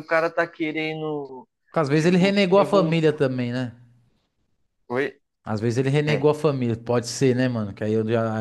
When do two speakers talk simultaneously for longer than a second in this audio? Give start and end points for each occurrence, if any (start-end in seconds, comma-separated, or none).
1.9-3.2